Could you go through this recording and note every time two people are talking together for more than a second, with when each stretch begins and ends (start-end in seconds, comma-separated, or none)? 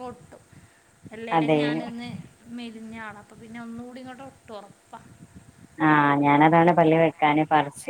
none